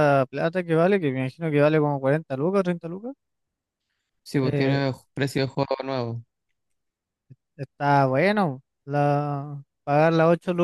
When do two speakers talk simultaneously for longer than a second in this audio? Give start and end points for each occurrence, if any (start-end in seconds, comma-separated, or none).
none